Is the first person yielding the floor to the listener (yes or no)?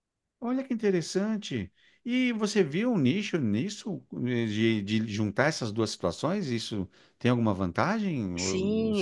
yes